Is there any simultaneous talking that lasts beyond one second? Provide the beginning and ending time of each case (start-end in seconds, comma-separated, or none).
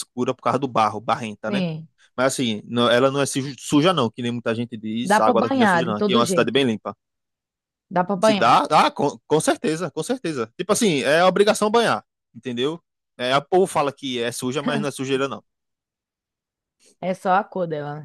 5.0-6.6